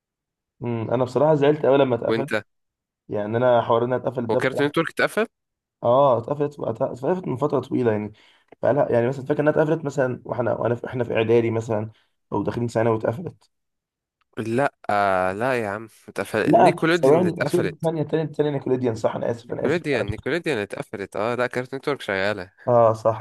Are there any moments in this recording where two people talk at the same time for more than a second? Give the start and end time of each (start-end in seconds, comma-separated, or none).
16.4-17.9